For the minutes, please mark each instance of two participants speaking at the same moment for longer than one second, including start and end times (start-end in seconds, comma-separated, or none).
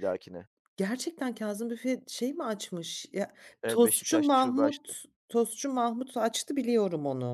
3.7-5.0